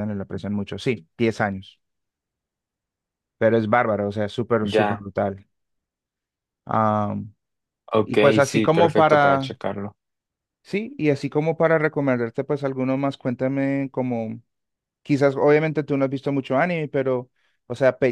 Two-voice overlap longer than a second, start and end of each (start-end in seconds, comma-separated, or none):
8.0-9.6